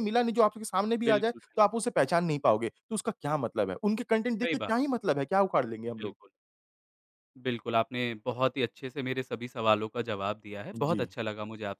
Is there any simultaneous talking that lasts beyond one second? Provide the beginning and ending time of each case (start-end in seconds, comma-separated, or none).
none